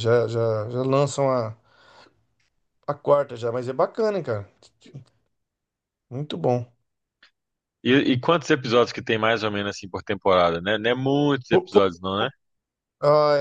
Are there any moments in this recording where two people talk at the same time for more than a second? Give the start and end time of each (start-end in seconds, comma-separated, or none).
none